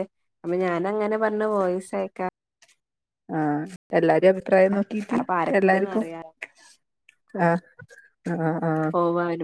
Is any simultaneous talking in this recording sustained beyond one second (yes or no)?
no